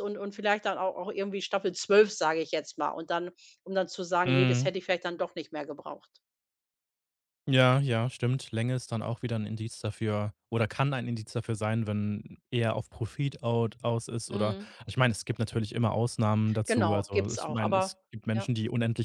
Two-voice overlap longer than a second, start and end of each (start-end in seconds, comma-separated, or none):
16.7-18.5